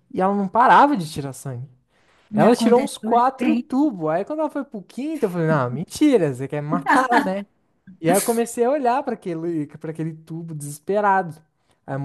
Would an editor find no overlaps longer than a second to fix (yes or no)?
no